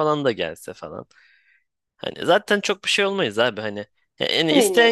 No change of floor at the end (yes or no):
yes